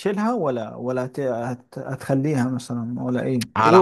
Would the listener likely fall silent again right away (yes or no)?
no